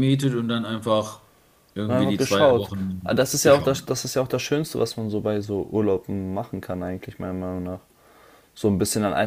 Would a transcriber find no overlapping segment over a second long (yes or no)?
no